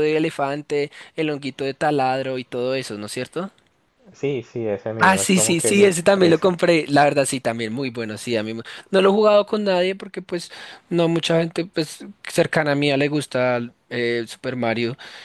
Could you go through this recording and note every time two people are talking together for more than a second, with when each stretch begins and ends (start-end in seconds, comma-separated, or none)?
5.0-6.5